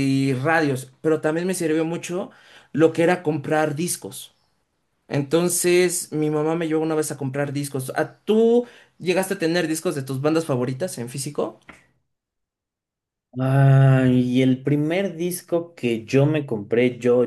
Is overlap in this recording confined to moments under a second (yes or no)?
yes